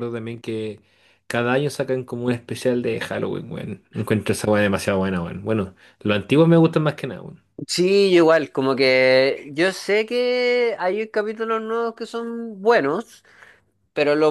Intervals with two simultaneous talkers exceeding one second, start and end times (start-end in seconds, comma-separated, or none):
none